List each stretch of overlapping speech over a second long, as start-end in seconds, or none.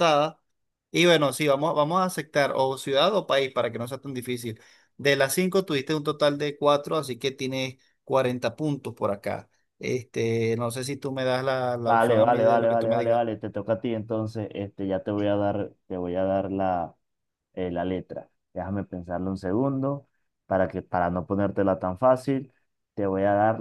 11.8-13.2